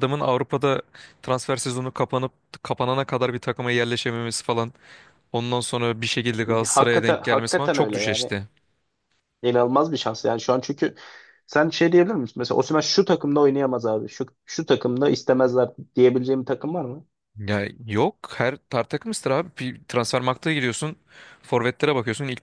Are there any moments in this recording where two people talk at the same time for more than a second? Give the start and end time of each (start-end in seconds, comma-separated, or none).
6.7-8.3